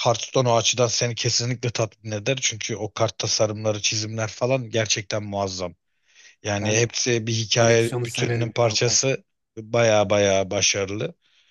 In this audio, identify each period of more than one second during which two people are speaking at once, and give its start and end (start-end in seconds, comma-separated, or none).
7.5-9.0